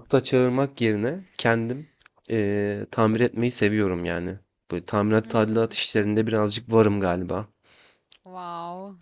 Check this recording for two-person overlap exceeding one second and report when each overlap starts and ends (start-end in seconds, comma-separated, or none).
5.2-6.6